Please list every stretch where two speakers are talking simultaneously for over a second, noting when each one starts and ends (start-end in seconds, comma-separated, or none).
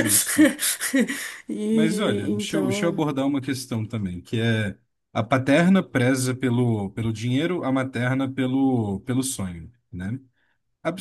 1.7-3.0